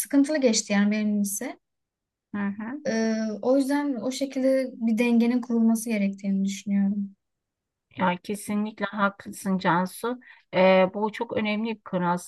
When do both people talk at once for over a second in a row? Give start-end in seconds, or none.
none